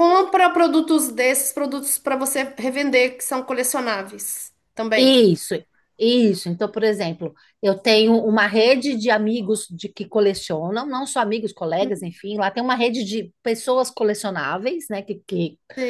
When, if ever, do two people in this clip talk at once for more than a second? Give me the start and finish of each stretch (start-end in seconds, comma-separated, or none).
none